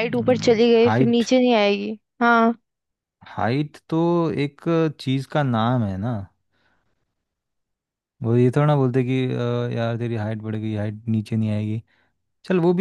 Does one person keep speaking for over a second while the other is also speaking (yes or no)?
no